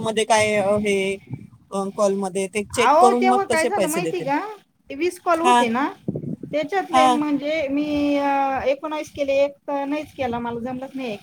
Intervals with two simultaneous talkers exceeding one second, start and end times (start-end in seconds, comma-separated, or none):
2.8-4.3